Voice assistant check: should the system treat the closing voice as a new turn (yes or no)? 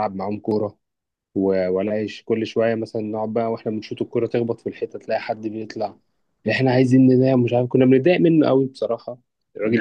yes